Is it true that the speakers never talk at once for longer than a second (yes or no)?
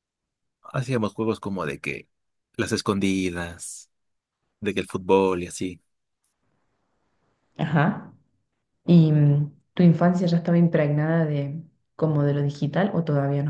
yes